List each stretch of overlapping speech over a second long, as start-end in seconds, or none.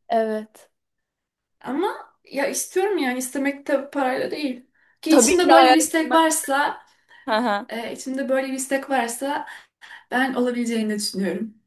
5.1-6.3